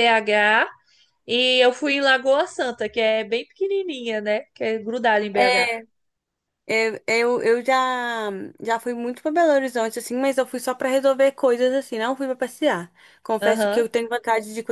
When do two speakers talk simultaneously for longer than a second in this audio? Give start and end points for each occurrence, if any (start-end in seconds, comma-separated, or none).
none